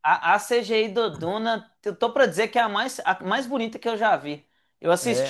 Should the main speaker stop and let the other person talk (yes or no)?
no